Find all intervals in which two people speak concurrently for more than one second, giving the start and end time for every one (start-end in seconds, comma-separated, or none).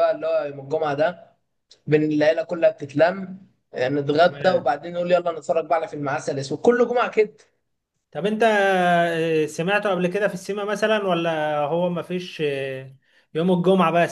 none